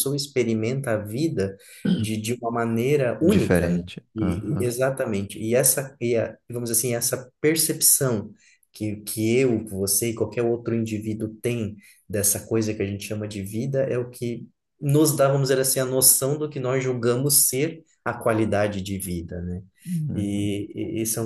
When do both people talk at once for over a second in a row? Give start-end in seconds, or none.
3.2-4.7